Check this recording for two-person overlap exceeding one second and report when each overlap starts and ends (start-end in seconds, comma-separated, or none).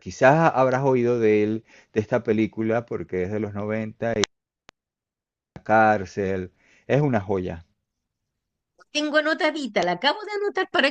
none